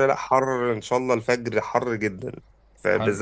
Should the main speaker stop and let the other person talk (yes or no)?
no